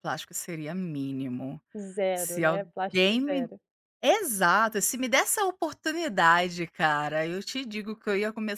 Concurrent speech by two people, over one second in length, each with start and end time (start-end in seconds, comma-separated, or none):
2.1-3.5